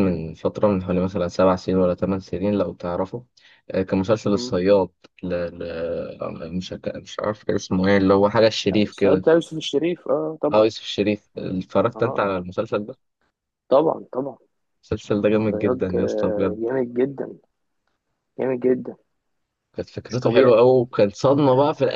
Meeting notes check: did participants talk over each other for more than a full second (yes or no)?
yes